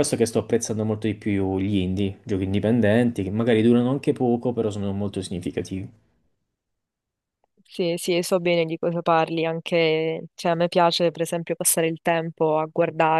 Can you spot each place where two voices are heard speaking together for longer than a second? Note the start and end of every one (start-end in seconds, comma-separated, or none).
none